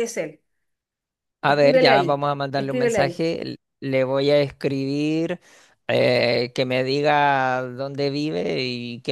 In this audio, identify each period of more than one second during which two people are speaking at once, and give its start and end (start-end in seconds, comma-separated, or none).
1.4-3.2